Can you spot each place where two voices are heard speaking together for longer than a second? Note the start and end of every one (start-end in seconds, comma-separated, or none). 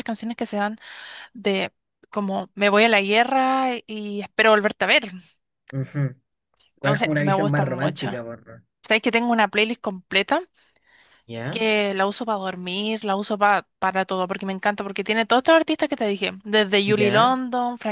6.8-8.1